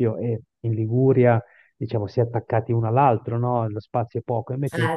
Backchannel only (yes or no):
yes